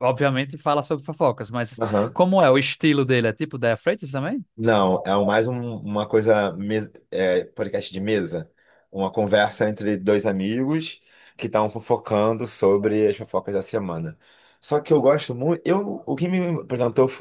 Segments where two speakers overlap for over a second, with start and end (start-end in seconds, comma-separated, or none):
none